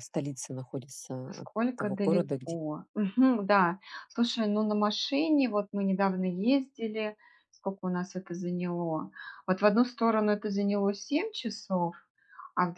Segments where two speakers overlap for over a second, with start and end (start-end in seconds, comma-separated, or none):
1.3-2.6